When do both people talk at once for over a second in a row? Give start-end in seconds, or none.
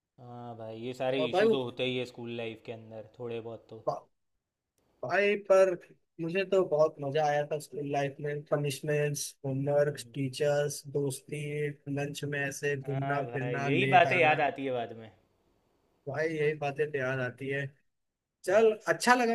12.9-14.4